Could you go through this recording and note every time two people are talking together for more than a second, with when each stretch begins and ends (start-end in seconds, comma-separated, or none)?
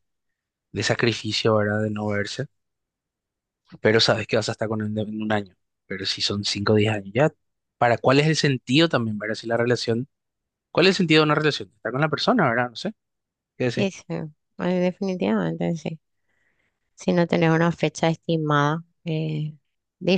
none